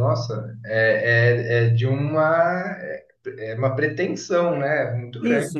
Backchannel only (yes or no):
no